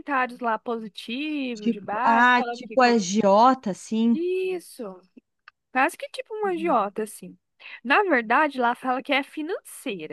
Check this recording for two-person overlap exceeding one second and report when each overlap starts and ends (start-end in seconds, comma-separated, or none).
1.5-3.0